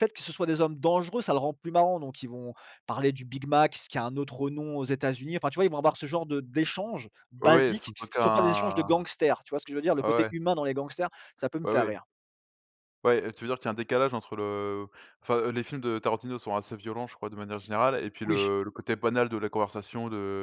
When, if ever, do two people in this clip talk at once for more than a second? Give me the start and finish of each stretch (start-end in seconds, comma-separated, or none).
7.4-8.9